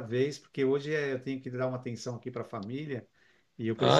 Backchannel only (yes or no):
yes